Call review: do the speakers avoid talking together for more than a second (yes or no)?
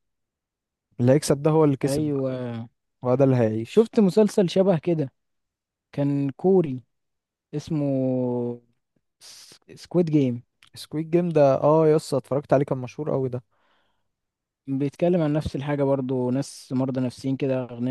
yes